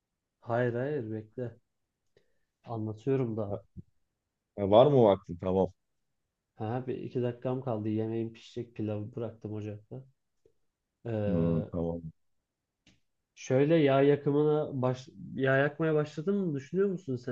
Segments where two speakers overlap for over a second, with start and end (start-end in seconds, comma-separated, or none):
none